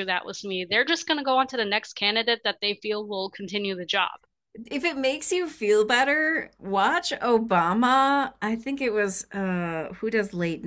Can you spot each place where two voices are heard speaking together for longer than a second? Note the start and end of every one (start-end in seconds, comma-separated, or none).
none